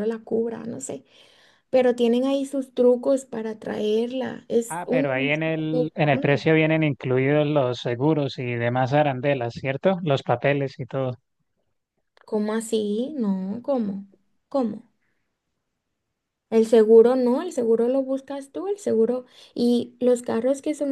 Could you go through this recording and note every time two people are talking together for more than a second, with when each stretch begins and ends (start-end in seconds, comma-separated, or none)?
4.7-6.4